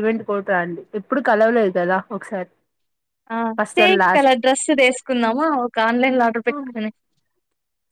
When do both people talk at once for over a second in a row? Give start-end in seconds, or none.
none